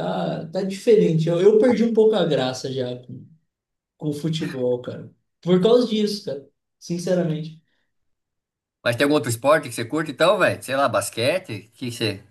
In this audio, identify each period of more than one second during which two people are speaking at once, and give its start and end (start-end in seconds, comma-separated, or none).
none